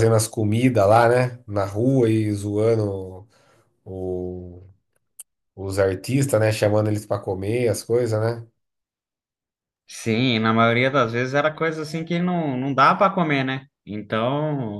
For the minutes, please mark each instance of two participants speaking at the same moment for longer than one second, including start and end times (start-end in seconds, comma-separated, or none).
none